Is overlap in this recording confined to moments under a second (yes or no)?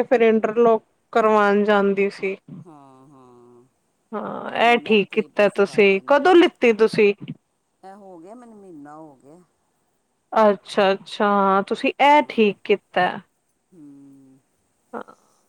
no